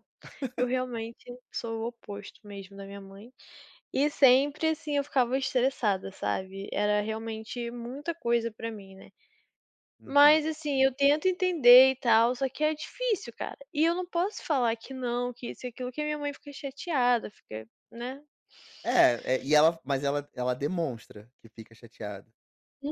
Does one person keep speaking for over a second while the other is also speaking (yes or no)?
no